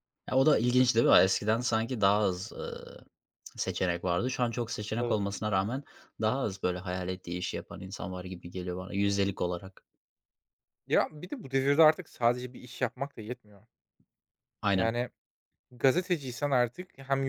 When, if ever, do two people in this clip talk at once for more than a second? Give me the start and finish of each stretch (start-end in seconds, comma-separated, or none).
none